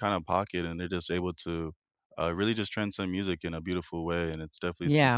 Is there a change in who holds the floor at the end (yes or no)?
yes